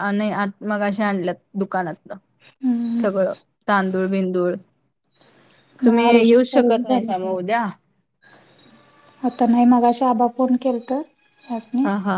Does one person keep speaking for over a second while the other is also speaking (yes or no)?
yes